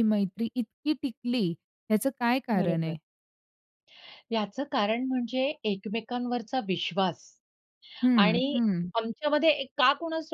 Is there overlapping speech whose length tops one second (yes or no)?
no